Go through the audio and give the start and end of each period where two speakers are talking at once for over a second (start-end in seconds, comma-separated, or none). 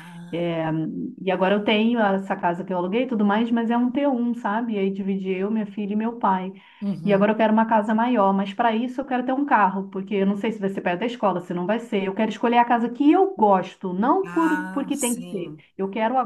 14.2-15.6